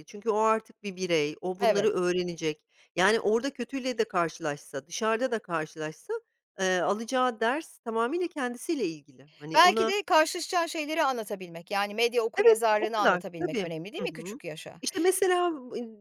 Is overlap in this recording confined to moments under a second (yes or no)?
no